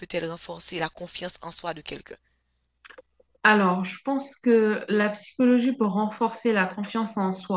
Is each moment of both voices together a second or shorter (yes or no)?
yes